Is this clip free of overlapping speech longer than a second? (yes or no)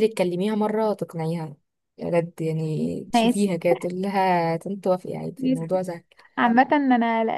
yes